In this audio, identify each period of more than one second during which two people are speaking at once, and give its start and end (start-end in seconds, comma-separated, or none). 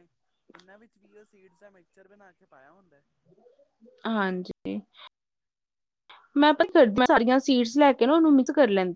none